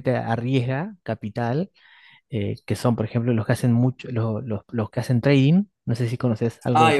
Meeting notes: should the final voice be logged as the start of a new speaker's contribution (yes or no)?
yes